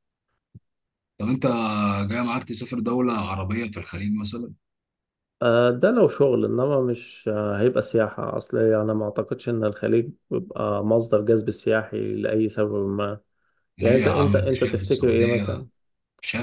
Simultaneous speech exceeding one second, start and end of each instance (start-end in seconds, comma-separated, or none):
13.8-15.7